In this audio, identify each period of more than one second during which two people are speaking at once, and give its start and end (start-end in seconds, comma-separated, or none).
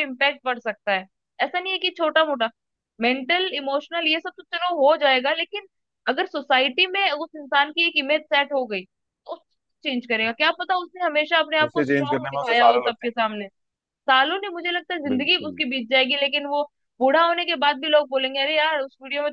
11.7-13.4